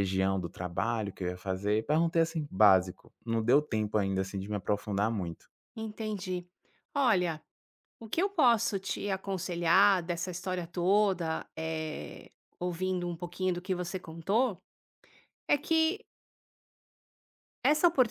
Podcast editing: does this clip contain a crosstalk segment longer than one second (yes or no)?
no